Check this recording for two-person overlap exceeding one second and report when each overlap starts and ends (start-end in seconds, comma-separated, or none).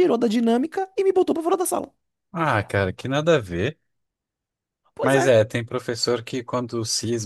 none